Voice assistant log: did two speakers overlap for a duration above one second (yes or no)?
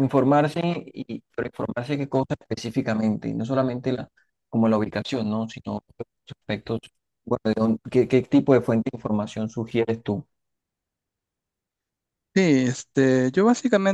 no